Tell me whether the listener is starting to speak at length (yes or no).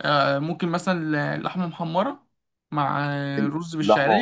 yes